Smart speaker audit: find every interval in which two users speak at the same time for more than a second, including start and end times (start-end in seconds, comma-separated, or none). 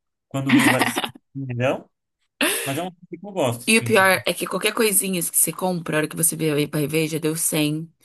none